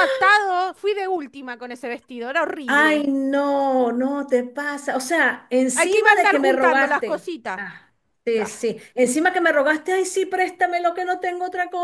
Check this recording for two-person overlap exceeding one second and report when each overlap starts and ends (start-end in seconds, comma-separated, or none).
5.7-7.6